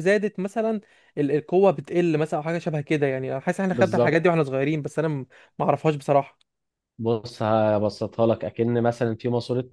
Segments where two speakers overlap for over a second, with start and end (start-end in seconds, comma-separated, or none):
none